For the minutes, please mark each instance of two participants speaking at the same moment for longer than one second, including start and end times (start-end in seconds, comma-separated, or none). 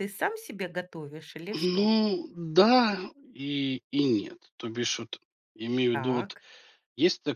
none